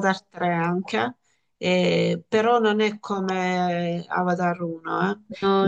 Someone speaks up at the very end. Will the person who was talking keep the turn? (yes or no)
yes